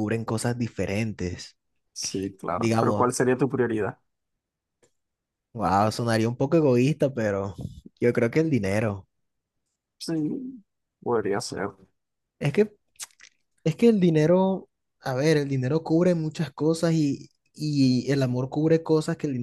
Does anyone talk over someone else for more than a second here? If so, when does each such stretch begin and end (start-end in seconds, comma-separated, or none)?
none